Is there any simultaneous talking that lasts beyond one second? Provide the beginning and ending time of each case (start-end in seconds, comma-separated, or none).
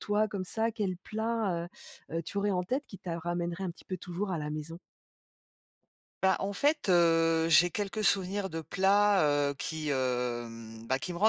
none